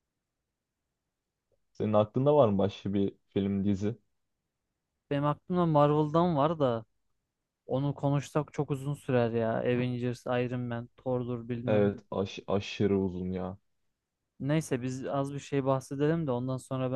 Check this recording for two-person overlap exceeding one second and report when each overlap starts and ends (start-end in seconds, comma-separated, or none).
none